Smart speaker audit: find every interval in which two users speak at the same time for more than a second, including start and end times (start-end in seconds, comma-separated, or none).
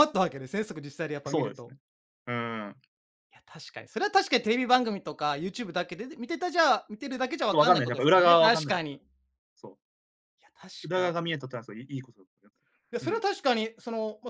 7.5-9.0